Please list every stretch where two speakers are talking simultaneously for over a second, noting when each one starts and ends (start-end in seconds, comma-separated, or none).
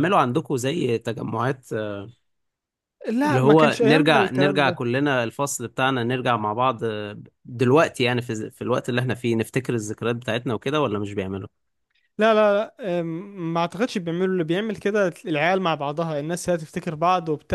3.2-4.8